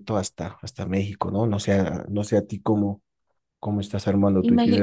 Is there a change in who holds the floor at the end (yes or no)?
yes